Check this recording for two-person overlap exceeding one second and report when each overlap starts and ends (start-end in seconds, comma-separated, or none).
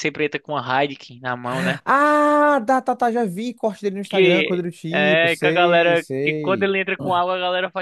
4.0-6.7